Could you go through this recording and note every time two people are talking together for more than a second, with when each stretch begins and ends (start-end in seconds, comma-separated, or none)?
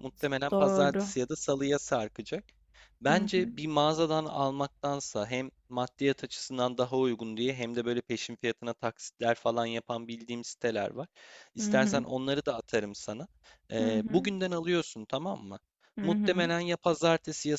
none